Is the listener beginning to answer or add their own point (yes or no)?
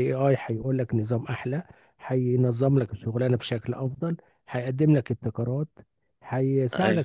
no